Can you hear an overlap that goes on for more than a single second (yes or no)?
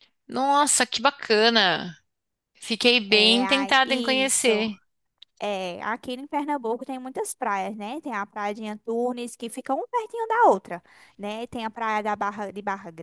yes